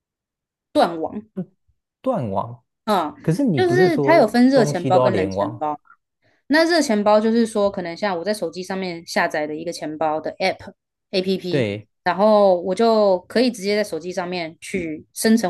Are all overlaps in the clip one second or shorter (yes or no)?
no